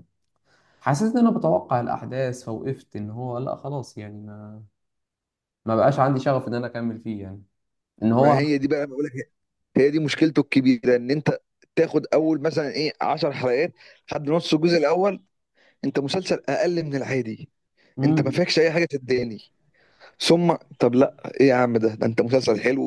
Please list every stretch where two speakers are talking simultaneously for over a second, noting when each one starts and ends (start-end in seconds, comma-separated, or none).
none